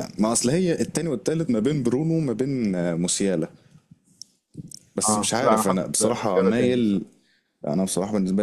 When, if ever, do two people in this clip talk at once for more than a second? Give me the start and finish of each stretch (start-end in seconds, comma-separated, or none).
5.1-7.0